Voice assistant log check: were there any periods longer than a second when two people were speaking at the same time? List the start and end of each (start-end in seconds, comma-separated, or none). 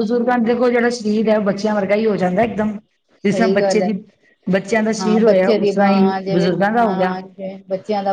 5.0-7.1